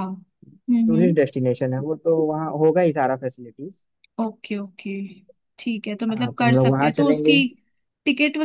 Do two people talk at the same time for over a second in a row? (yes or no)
yes